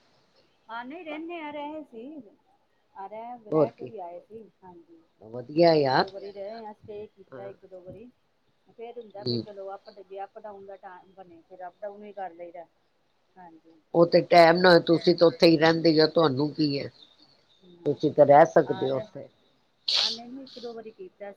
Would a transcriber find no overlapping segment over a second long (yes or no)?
no